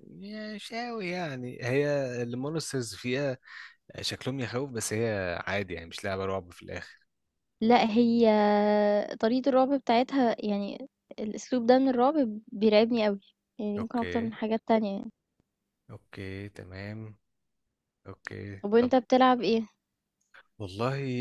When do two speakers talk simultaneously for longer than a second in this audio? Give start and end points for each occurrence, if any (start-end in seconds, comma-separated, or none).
none